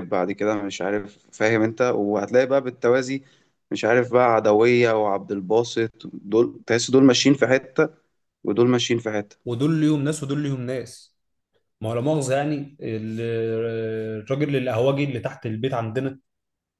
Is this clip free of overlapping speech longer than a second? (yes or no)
yes